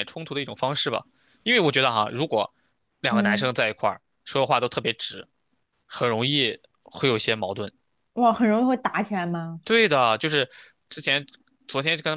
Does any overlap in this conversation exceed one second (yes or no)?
no